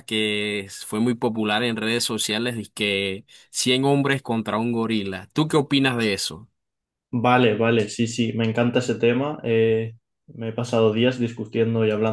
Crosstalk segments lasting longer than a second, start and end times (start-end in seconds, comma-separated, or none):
none